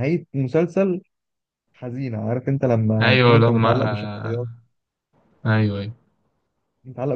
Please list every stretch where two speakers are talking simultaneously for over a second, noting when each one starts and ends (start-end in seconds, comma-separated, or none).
3.0-4.4